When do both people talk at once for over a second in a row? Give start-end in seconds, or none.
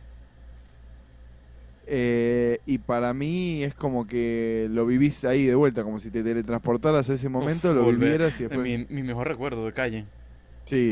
7.4-8.8